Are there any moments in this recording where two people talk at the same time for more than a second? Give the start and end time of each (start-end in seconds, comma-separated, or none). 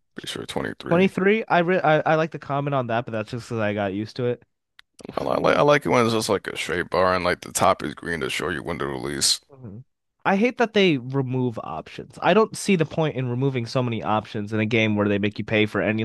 none